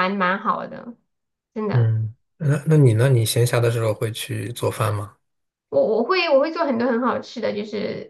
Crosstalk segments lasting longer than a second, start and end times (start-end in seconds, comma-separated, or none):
none